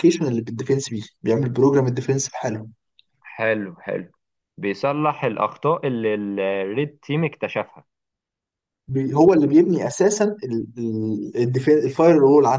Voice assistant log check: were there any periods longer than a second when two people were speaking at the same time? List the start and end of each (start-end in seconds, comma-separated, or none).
none